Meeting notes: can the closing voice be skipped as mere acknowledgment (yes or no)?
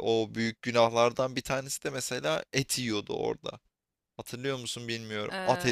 no